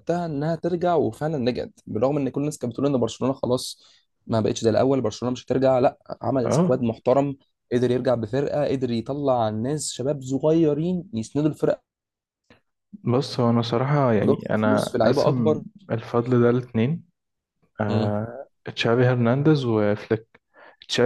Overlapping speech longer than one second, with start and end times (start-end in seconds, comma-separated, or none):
14.2-15.6